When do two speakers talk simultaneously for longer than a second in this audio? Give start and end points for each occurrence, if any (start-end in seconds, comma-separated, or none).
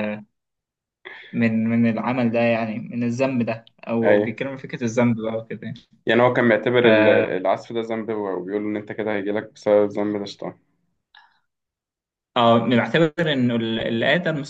none